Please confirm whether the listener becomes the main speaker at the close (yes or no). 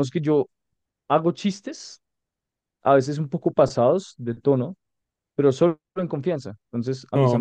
no